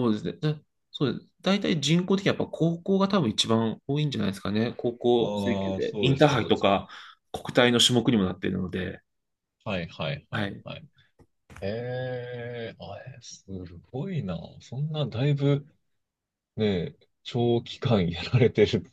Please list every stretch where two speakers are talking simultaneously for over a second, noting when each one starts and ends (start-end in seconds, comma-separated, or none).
5.2-6.7